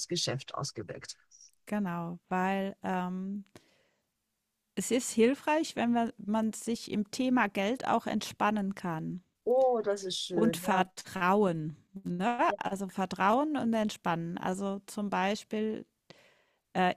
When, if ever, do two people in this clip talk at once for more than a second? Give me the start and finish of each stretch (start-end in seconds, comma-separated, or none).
none